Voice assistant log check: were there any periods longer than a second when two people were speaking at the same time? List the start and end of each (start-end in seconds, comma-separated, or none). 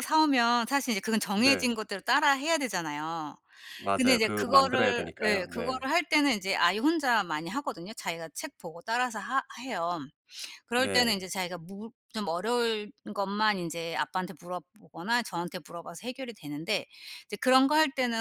4.0-5.8